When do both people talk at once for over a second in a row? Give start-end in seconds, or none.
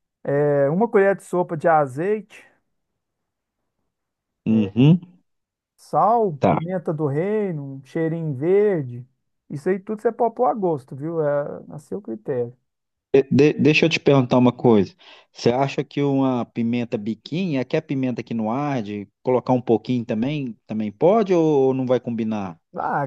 none